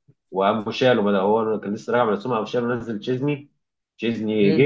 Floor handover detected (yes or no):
no